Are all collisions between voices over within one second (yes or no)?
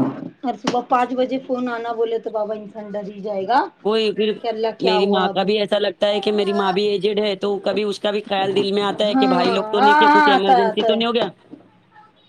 no